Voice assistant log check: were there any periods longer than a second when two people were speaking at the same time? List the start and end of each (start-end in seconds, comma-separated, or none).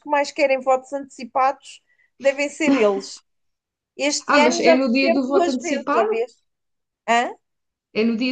4.3-6.1